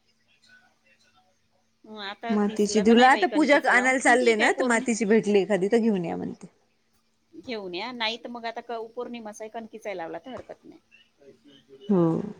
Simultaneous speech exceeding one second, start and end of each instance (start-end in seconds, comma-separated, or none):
2.4-4.8